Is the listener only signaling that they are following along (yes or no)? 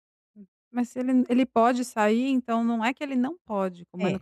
yes